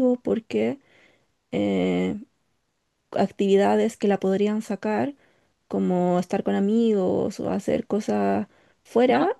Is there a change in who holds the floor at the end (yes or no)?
no